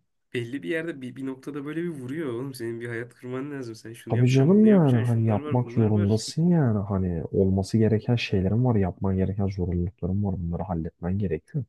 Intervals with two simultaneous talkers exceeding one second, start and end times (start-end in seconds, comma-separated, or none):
4.1-6.2